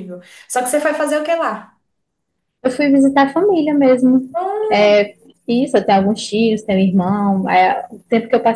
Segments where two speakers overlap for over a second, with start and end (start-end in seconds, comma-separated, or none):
none